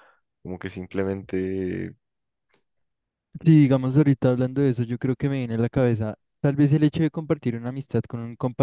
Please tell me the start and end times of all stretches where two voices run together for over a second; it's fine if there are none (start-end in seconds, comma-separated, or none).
none